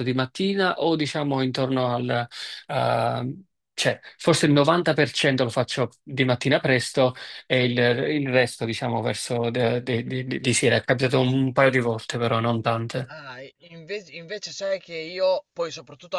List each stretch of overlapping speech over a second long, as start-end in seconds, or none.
none